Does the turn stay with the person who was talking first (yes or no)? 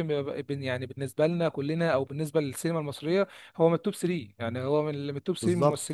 no